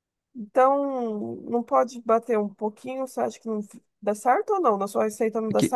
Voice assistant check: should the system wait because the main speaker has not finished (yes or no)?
no